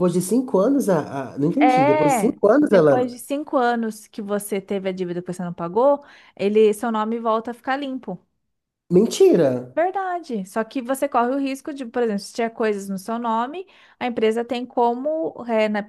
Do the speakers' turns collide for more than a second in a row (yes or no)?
yes